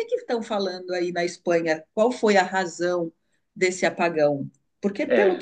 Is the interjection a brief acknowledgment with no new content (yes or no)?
yes